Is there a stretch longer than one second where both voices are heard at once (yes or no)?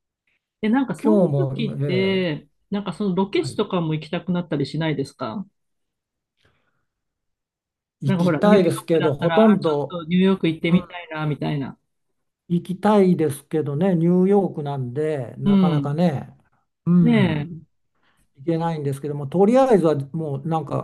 yes